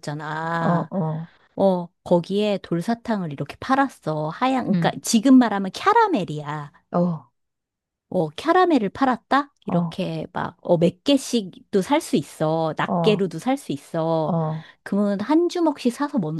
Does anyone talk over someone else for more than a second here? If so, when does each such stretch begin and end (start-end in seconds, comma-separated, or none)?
none